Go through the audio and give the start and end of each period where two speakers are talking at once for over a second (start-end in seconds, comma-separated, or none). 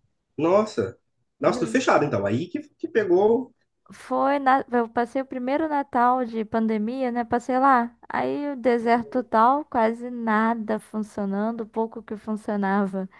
none